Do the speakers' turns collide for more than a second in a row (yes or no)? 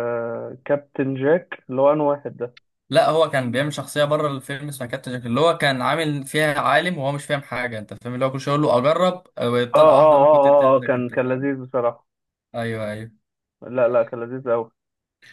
yes